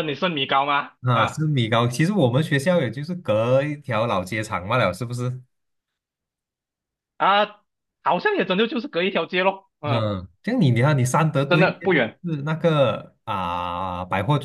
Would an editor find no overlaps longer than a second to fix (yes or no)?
yes